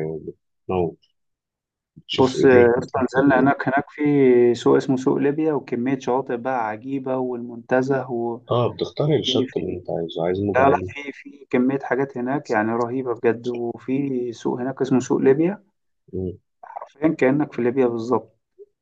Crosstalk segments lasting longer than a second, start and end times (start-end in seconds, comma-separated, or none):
2.1-3.5